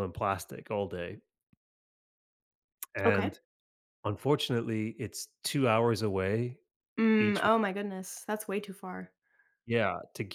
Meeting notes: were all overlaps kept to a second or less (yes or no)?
yes